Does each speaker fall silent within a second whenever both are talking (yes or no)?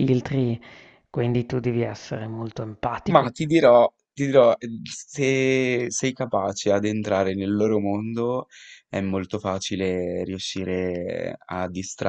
yes